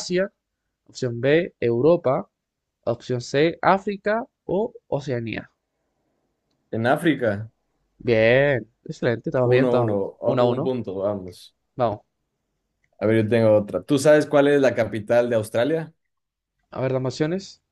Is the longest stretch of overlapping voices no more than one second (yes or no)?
no